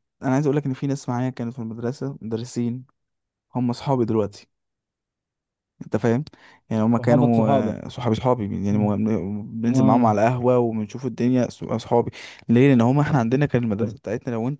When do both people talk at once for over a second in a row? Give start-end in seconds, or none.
none